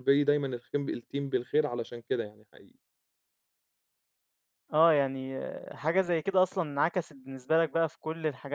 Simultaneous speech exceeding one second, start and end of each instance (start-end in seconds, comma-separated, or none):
none